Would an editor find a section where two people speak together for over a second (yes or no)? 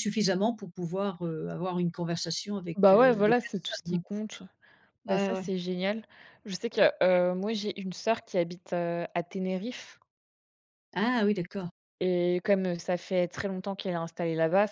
yes